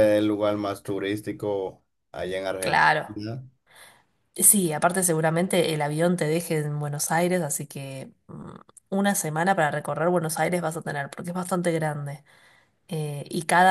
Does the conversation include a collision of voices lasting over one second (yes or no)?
no